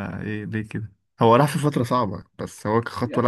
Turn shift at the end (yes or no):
yes